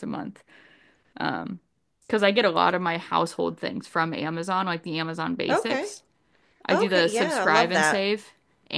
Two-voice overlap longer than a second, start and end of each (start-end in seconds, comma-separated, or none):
6.7-8.0